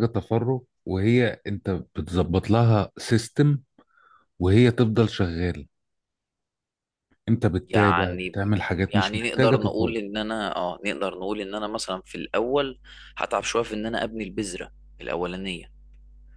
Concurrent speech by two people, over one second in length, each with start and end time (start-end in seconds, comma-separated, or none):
7.7-9.9